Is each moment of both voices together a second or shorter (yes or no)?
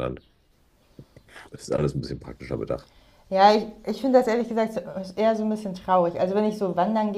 yes